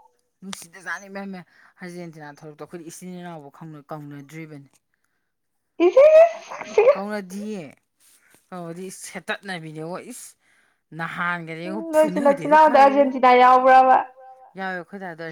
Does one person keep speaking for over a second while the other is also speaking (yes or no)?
yes